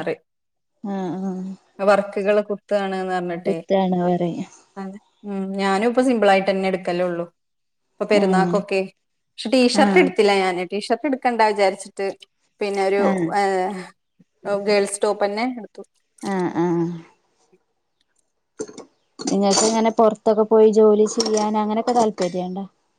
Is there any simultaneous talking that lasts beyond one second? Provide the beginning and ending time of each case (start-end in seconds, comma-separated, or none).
none